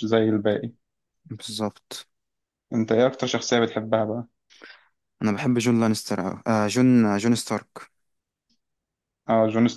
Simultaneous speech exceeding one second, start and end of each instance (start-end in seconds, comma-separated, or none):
none